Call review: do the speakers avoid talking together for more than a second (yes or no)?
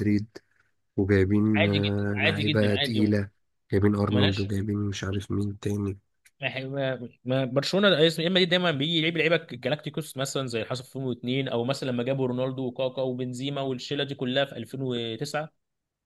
no